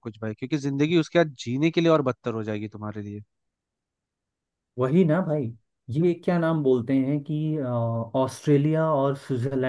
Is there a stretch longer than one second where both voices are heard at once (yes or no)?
no